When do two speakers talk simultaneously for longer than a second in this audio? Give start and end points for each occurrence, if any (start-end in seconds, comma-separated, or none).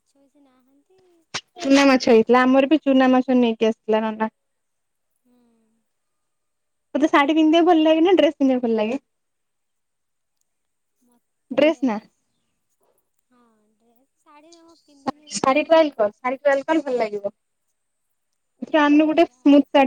none